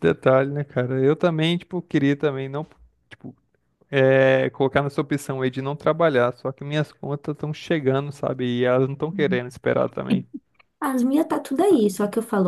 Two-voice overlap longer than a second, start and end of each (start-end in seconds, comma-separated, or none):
none